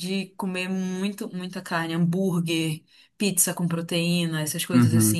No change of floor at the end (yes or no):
no